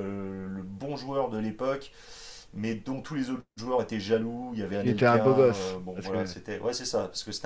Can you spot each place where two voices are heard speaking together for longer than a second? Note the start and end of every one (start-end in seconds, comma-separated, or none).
4.7-6.3